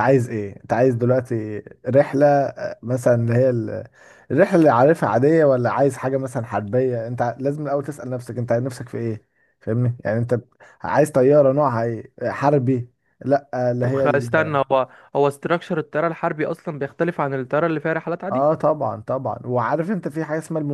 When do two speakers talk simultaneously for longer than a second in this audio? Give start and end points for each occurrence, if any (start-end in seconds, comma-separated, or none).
none